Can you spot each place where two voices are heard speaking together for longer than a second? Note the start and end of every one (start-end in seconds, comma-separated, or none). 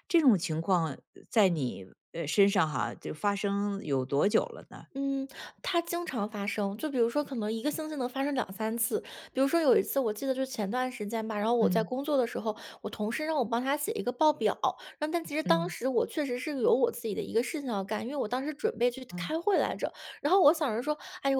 none